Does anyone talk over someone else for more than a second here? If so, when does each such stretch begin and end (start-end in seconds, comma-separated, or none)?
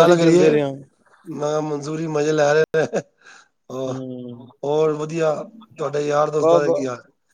none